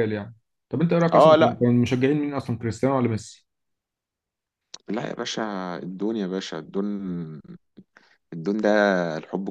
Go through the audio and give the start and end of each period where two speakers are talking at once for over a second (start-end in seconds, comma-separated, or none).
none